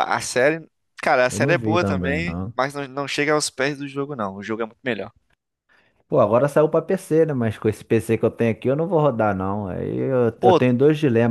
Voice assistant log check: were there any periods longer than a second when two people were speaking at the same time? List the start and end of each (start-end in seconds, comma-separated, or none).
1.3-2.5